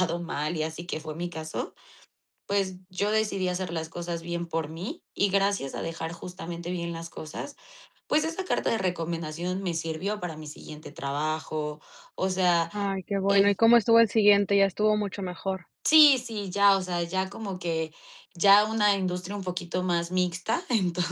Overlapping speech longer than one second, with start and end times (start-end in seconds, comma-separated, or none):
none